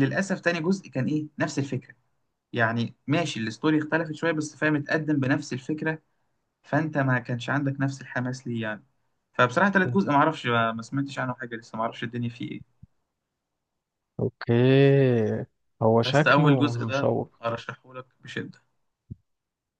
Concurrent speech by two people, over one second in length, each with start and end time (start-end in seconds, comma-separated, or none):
16.0-17.4